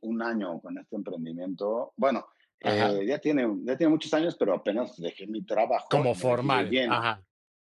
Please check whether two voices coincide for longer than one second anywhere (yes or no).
yes